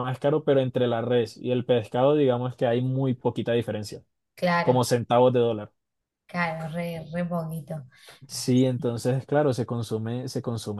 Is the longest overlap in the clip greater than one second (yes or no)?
no